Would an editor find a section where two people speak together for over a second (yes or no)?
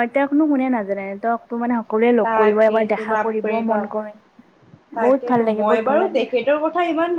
yes